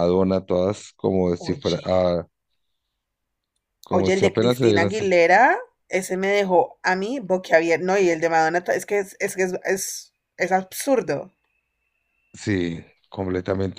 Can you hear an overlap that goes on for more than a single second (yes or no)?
yes